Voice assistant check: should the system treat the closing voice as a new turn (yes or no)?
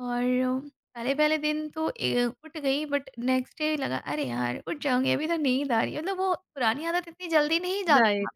yes